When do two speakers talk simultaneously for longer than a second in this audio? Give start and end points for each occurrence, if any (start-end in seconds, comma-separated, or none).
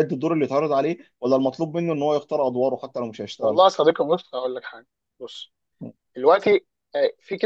none